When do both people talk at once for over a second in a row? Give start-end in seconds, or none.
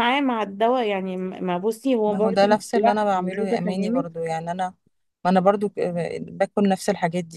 2.1-4.1